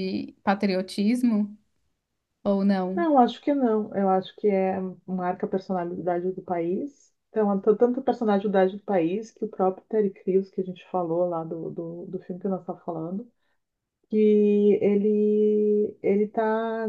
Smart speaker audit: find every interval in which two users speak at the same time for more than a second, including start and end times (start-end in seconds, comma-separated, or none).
none